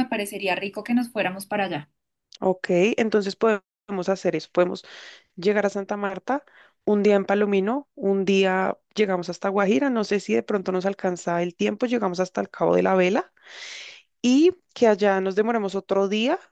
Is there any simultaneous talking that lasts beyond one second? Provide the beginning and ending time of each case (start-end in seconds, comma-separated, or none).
none